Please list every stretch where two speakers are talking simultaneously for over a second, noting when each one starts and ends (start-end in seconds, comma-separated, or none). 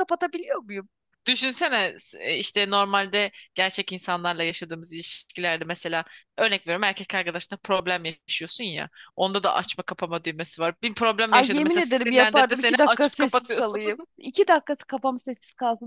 11.3-13.8